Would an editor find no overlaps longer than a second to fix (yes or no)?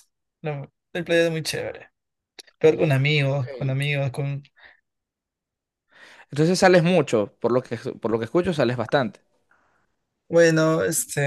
yes